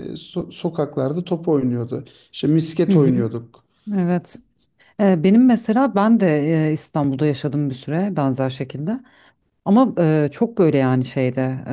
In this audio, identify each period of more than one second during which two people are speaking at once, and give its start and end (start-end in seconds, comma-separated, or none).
none